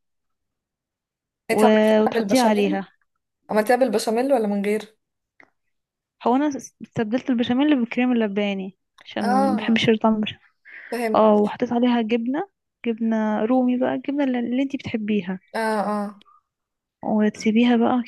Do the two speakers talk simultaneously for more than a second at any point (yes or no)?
yes